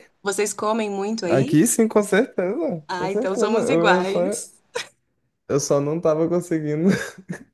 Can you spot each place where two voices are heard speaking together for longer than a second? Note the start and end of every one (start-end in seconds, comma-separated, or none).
2.9-4.2